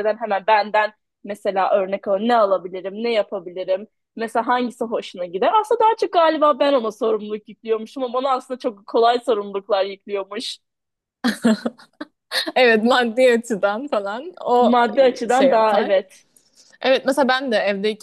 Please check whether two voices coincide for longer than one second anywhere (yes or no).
no